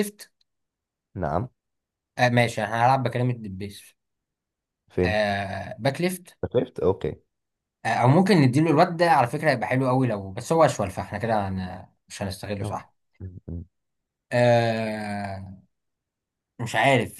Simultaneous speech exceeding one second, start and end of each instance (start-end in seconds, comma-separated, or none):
none